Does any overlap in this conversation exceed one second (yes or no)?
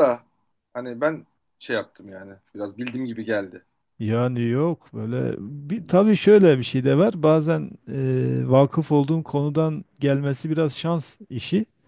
no